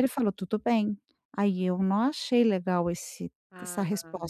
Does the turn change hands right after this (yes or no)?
yes